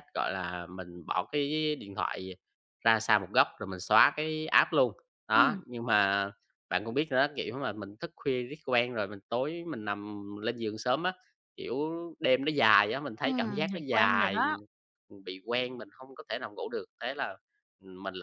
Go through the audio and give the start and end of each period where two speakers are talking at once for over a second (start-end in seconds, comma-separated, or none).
13.2-14.6